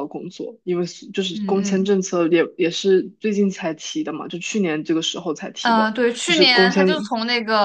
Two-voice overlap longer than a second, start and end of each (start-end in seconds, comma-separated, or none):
5.6-7.1